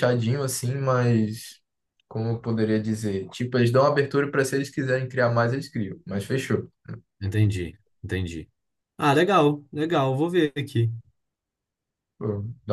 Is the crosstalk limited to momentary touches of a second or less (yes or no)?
yes